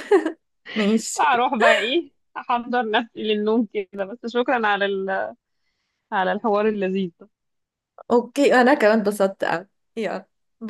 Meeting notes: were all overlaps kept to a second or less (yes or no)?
yes